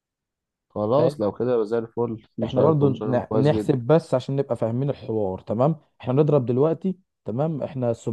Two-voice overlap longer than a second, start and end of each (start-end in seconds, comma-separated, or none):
2.4-3.7